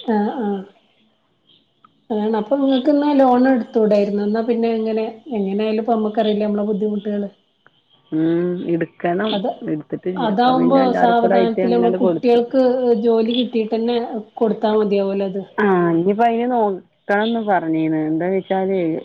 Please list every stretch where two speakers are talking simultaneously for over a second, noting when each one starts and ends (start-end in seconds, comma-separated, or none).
10.9-12.4